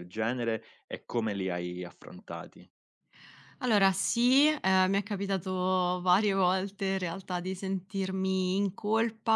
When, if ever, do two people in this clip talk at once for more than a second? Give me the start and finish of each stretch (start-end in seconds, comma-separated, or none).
none